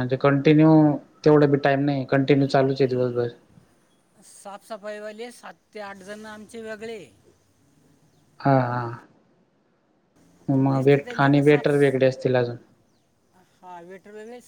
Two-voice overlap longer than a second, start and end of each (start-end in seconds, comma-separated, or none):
10.7-11.9